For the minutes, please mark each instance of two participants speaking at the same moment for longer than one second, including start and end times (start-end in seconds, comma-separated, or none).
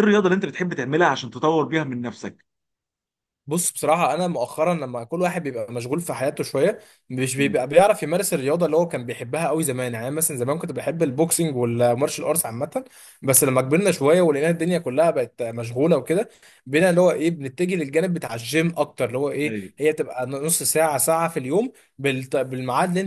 none